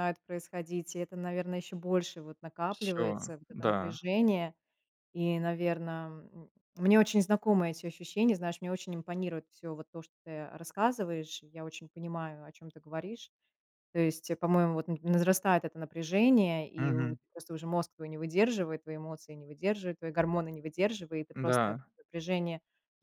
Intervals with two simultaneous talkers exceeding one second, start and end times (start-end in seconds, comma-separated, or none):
2.7-4.0